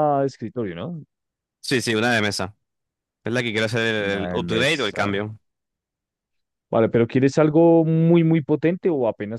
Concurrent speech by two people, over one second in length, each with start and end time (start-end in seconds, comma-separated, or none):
4.0-5.2